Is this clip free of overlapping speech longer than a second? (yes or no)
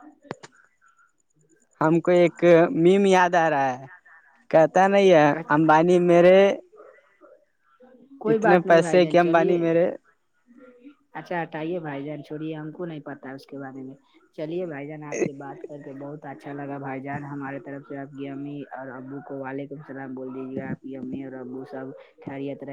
no